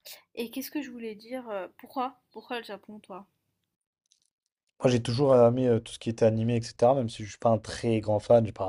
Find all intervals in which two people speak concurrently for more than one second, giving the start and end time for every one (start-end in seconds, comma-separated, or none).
none